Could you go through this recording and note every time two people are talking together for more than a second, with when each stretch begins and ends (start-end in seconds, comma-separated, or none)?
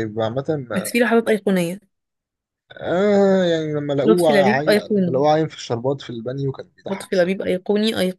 4.0-5.2